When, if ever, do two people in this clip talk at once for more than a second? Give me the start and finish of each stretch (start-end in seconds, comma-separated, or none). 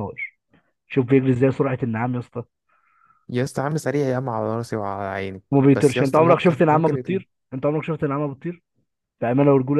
5.5-7.2